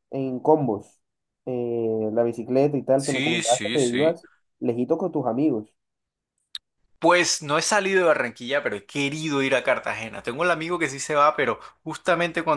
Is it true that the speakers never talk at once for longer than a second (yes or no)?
no